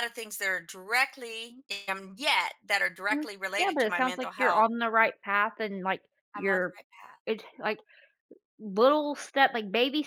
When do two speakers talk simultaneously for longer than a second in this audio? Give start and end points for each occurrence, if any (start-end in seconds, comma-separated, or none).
3.1-4.7